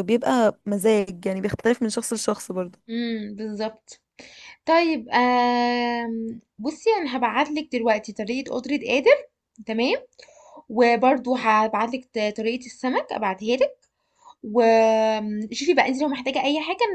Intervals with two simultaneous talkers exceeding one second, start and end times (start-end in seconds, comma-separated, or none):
none